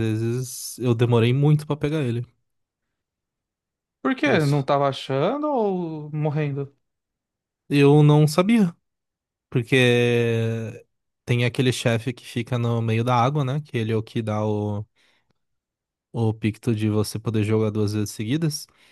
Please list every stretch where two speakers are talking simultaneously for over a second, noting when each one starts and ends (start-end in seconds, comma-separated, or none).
none